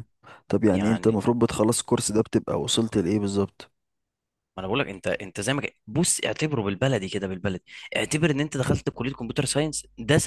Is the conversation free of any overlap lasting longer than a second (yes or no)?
yes